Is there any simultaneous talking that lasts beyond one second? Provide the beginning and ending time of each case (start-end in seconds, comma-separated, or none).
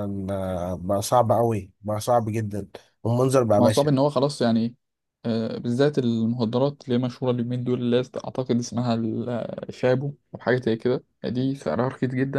none